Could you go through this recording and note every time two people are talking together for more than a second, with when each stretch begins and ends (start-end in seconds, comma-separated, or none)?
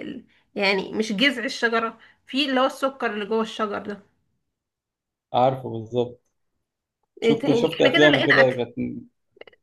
7.2-8.6